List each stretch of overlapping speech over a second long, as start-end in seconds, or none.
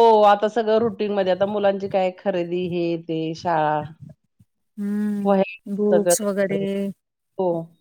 5.2-6.6